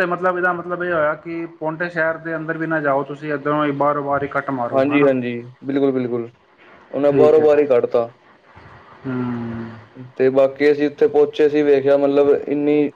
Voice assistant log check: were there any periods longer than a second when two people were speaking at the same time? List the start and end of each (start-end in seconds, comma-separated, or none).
none